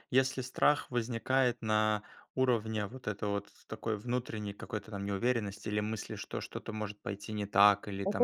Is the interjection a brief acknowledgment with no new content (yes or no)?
no